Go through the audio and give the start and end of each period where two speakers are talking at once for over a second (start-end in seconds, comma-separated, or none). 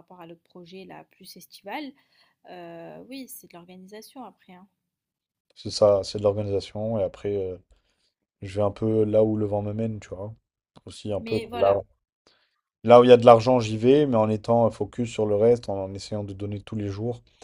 none